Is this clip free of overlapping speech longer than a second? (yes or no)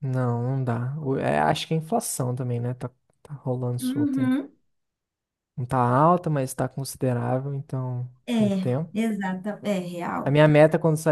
yes